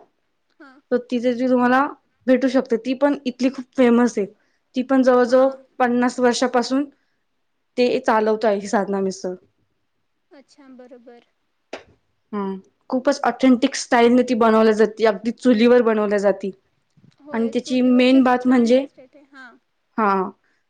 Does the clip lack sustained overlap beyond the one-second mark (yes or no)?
no